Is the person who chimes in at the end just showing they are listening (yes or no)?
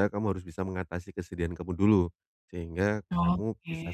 yes